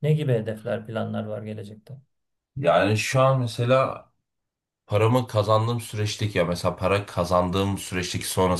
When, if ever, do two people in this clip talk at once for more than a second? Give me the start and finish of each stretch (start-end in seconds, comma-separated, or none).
none